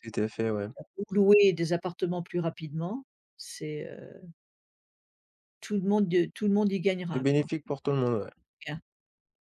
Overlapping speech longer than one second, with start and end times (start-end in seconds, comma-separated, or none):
none